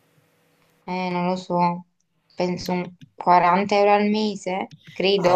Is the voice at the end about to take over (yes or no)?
yes